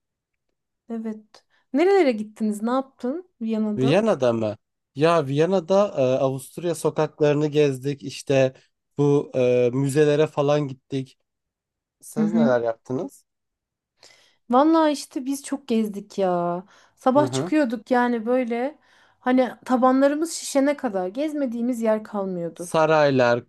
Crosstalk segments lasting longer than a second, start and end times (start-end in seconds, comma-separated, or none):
none